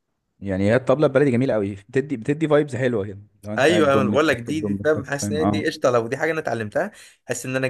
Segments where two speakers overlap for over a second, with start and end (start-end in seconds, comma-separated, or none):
3.6-5.7